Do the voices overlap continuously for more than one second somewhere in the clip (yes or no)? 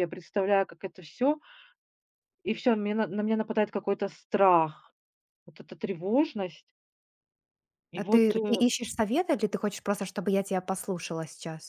no